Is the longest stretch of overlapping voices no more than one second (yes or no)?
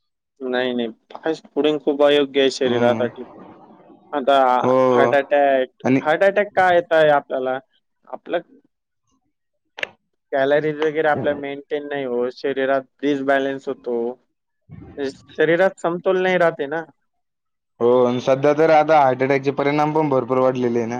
yes